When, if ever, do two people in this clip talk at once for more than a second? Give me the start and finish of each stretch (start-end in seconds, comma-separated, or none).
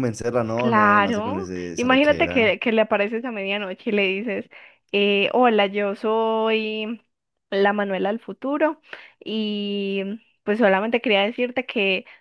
0.5-2.5